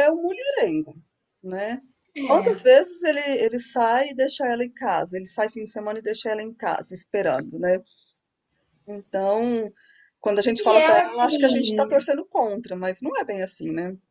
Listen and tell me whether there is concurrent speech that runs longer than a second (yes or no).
yes